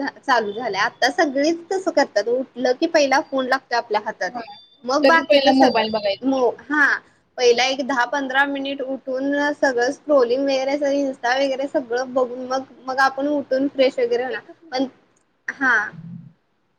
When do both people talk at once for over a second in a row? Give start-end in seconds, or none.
5.0-6.4